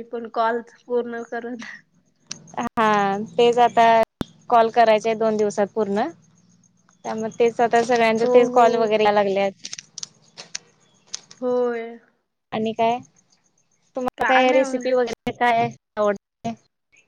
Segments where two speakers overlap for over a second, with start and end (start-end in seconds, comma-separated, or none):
none